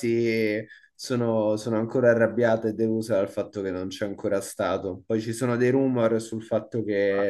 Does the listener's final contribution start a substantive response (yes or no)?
no